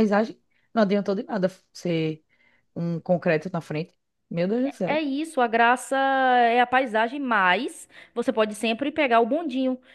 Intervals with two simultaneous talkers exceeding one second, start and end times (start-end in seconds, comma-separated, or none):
none